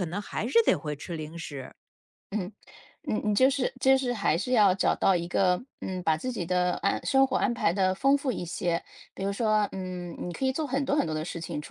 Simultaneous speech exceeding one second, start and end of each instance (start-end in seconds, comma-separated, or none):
none